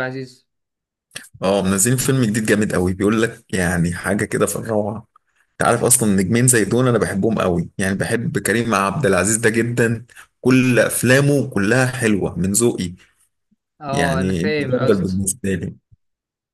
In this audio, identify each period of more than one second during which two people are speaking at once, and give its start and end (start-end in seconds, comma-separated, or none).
13.9-15.2